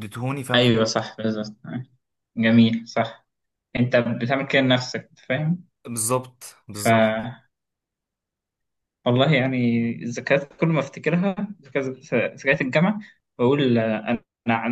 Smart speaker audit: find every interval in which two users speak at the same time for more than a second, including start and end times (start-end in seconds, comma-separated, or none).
none